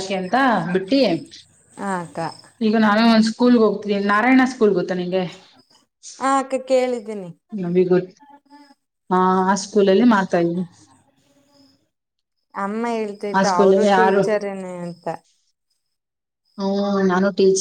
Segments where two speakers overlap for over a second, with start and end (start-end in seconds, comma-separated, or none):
none